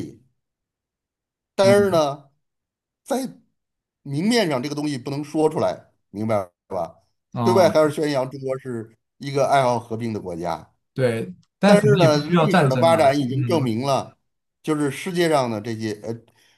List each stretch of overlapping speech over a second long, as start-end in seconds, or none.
11.6-13.7